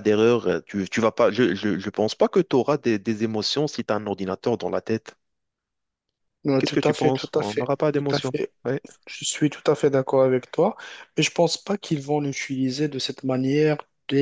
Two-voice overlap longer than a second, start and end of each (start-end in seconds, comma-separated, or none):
6.6-8.5